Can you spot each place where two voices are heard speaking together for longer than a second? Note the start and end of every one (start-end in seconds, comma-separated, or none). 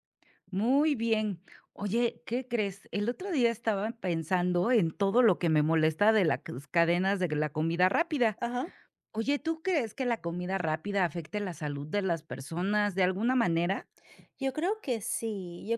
none